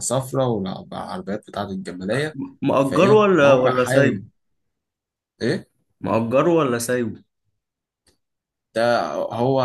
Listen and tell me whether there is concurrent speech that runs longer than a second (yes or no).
yes